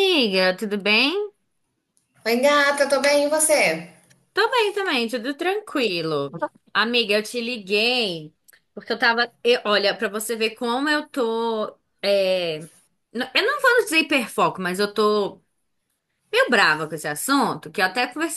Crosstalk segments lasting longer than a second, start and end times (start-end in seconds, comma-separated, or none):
none